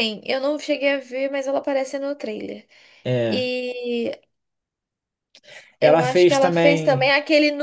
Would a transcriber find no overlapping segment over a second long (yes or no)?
no